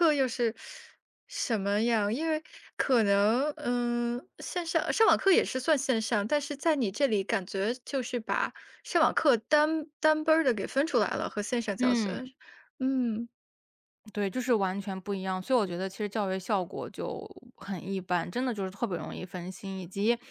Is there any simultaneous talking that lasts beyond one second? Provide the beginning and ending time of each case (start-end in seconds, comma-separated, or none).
none